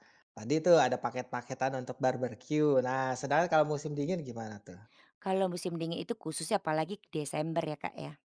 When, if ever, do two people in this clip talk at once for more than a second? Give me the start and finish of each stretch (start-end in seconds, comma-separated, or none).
none